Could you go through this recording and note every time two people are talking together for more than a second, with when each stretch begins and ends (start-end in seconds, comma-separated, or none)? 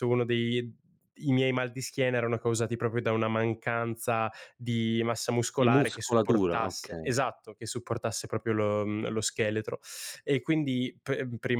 5.6-7.2